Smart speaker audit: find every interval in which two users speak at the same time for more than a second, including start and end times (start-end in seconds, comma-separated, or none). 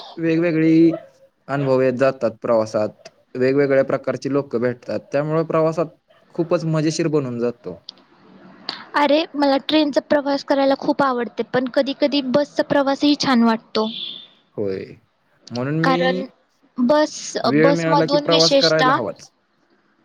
17.5-18.9